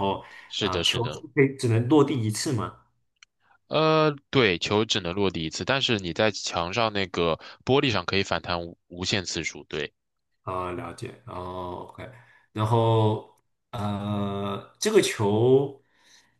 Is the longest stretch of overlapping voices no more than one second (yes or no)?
yes